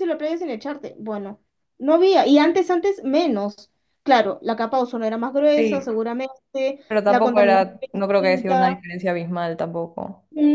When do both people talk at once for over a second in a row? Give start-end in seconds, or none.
6.9-8.8